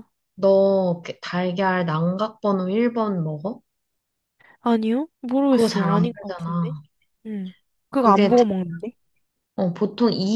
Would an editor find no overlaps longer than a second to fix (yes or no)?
no